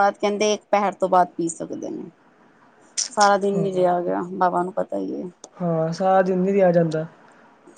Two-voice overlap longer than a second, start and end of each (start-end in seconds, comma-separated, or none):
none